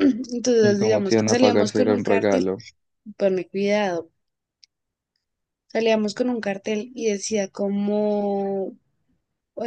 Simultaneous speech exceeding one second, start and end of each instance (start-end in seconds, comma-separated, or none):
0.6-2.5